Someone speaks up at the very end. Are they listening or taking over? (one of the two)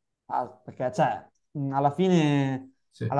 listening